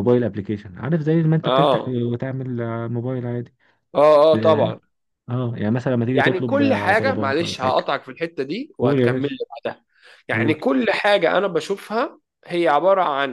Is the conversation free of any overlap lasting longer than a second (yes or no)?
no